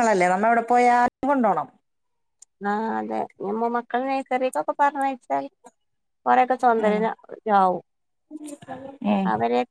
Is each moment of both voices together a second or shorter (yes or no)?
yes